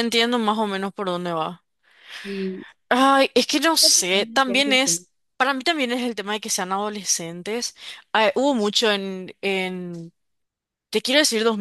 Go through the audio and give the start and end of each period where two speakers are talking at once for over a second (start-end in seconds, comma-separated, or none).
3.7-5.0